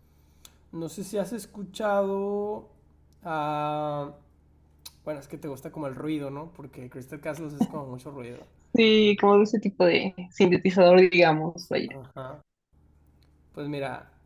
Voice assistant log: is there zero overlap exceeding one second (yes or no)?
yes